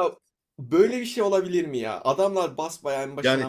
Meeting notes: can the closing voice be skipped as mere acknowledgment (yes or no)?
no